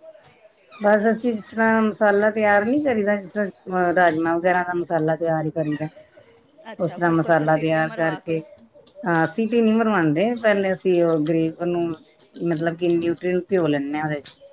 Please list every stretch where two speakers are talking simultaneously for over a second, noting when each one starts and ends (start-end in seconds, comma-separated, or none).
6.8-8.4